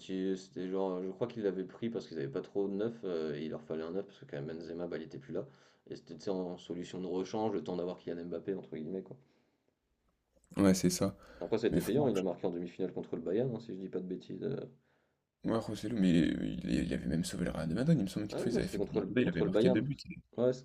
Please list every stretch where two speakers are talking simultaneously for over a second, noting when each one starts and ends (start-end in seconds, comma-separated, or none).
18.3-19.8